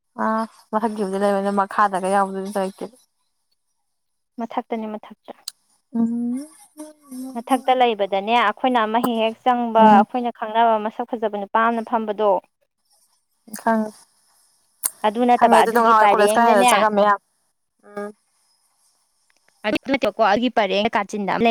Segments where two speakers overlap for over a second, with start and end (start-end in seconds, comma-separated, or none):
15.4-16.7